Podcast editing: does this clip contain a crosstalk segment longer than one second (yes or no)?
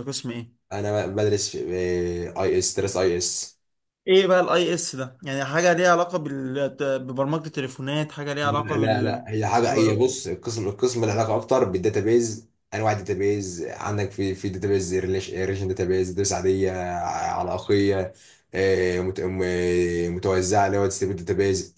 yes